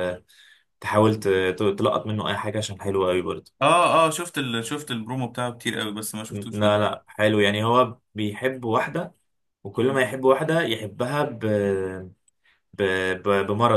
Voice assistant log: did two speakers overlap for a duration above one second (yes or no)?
no